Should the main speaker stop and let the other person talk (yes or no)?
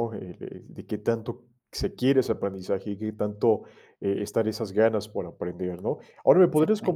no